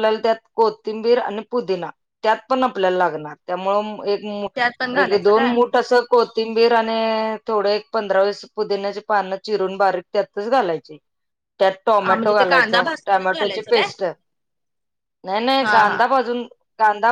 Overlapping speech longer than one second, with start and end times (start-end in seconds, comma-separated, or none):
12.1-13.9